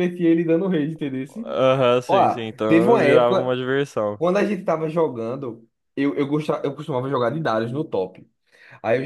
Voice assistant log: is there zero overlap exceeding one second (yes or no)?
no